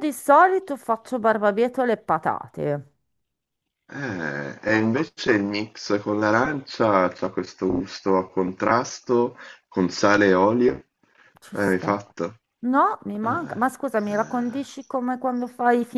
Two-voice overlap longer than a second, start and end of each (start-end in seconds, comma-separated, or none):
none